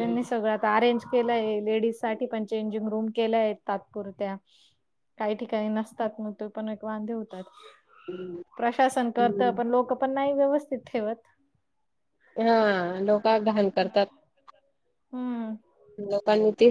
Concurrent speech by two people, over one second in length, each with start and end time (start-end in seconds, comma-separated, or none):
none